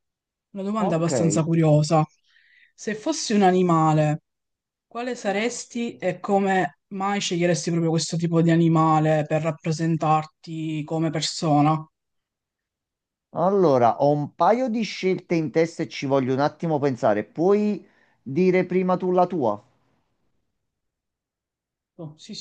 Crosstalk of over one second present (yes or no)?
no